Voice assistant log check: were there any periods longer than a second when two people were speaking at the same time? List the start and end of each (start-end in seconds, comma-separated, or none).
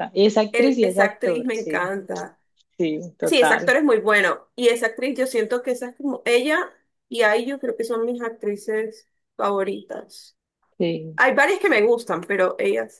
0.5-1.9